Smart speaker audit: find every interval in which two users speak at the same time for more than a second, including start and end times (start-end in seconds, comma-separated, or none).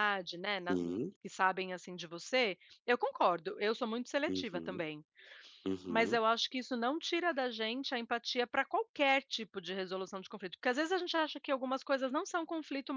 none